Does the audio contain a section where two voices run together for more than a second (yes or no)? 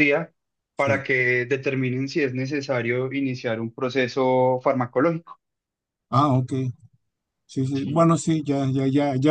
no